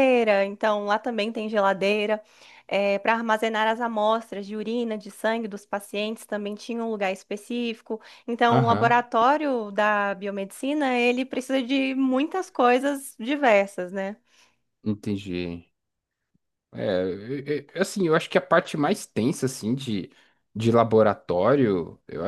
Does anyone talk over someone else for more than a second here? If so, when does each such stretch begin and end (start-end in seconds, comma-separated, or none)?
none